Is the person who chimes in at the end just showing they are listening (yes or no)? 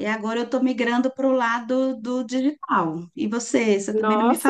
no